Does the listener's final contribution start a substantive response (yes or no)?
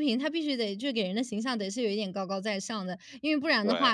no